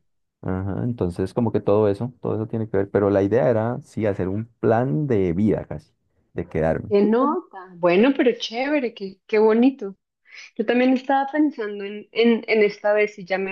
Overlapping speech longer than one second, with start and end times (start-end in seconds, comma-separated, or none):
none